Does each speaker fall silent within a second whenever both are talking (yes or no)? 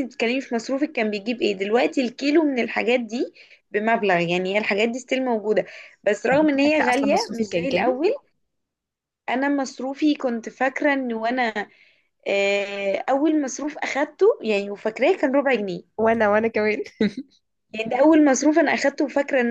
no